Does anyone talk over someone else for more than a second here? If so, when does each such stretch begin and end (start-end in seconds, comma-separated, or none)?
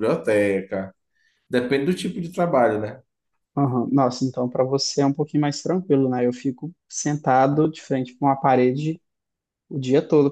none